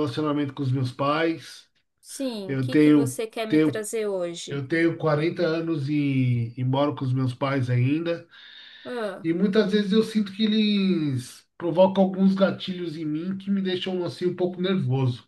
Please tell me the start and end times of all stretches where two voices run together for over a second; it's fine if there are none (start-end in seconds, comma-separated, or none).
2.5-3.9